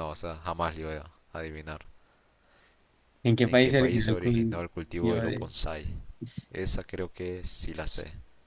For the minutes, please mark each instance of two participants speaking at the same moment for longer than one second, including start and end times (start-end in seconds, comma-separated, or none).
3.4-5.5